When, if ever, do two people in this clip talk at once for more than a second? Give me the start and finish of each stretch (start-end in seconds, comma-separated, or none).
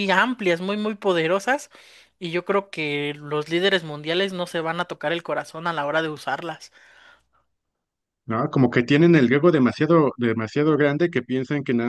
none